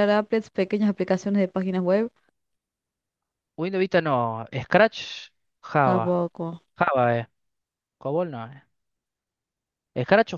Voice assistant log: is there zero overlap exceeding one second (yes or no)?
yes